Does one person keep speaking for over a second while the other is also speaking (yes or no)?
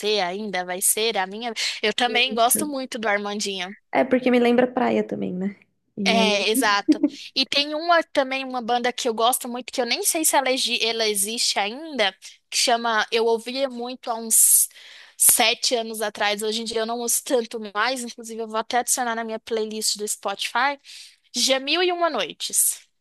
no